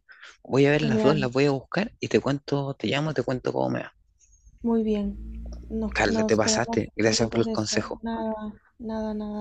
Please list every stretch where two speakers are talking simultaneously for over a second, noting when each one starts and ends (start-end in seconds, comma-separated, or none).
5.9-8.0